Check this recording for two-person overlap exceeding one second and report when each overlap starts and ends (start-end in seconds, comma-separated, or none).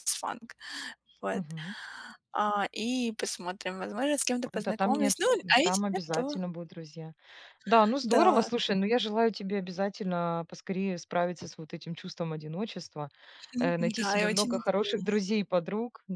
4.5-6.3, 13.6-15.2